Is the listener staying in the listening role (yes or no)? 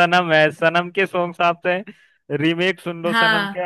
yes